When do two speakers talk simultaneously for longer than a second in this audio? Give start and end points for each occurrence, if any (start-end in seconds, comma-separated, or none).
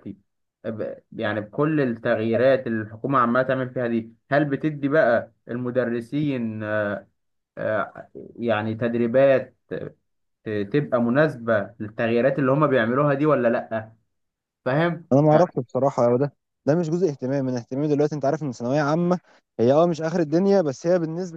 none